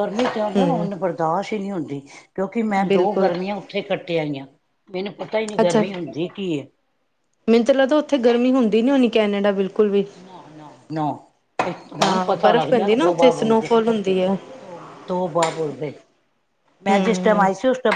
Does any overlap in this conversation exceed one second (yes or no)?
yes